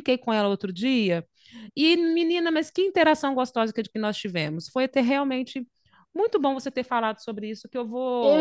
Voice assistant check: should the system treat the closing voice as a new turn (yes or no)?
yes